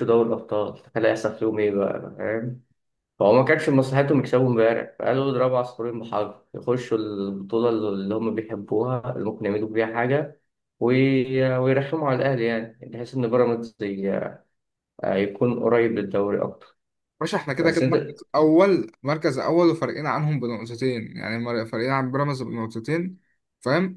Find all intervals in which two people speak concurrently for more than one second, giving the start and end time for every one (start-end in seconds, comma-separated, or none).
none